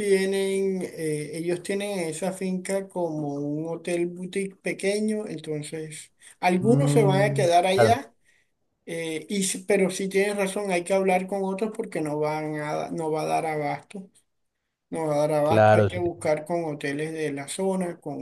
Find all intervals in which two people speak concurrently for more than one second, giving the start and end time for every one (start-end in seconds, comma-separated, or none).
6.6-8.0